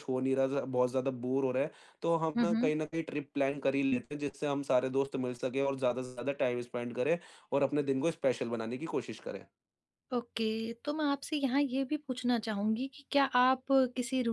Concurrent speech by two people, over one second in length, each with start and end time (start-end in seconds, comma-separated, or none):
none